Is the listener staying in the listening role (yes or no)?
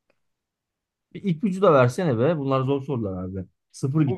no